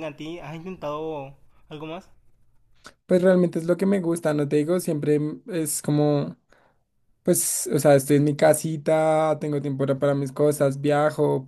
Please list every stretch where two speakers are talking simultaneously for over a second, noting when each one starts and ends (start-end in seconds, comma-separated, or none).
none